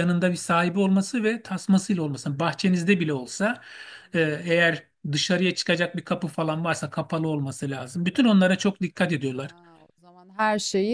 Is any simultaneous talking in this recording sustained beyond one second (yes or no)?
no